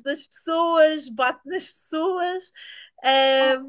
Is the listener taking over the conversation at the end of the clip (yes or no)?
no